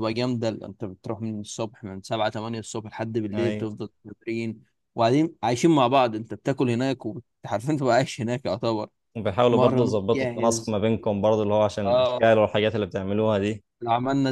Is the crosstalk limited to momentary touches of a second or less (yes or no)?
no